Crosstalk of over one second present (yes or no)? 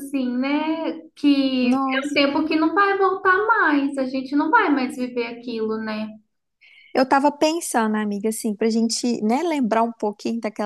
no